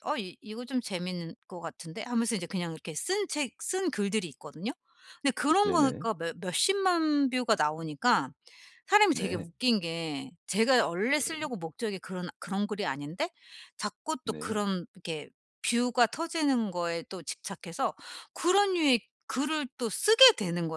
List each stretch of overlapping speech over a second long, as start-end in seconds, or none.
none